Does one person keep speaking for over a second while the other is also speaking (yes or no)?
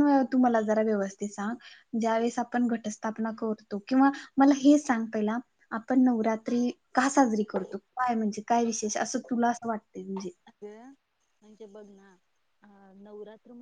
no